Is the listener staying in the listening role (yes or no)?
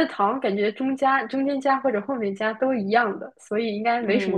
no